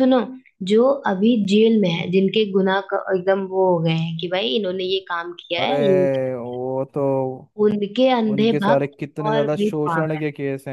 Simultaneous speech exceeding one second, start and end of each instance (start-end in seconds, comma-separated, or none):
8.3-10.2